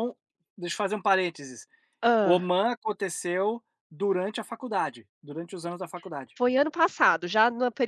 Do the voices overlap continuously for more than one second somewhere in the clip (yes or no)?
no